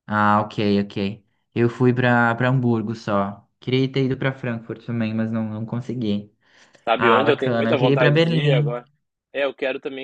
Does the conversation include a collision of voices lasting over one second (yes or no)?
yes